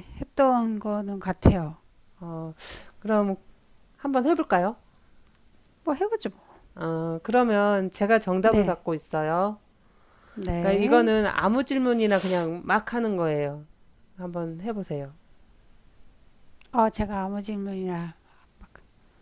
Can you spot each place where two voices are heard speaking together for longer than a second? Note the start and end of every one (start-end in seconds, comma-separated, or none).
none